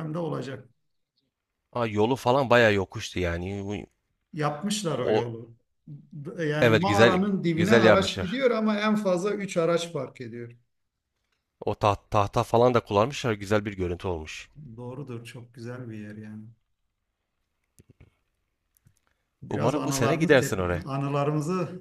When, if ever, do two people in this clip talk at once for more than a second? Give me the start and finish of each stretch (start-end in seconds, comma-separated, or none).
6.6-8.4, 19.5-20.8